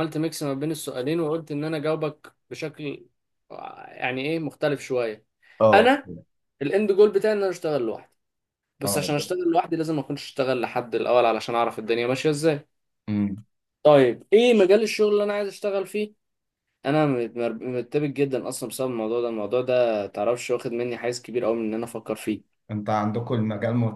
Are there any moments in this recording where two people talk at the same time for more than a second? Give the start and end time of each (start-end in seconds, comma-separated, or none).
none